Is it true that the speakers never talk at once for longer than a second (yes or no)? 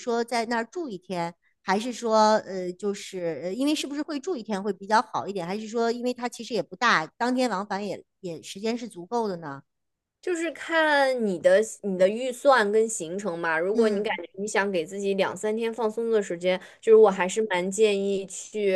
yes